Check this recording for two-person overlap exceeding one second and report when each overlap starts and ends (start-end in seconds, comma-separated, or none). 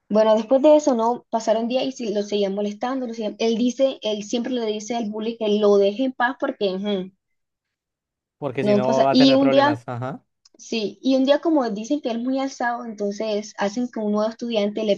8.6-9.8